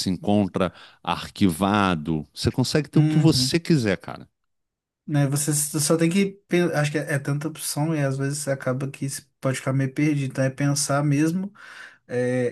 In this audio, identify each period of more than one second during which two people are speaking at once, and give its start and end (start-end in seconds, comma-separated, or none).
none